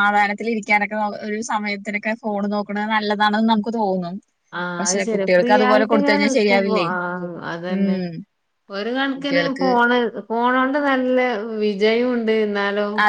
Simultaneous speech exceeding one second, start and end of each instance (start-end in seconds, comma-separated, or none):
4.8-6.9